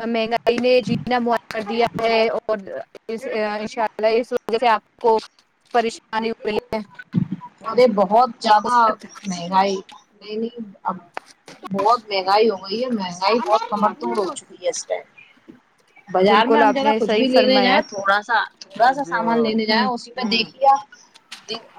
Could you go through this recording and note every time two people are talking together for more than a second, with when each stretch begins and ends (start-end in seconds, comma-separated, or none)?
16.3-17.8